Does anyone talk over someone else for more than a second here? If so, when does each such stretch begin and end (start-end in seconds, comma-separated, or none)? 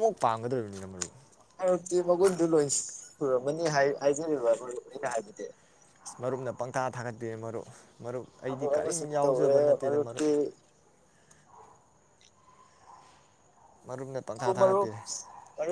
8.5-10.3